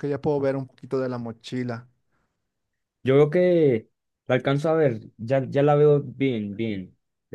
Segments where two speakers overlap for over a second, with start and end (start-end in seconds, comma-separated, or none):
none